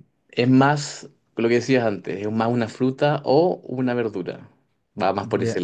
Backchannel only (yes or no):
no